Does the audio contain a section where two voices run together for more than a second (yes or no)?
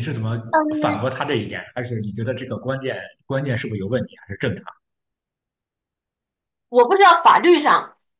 no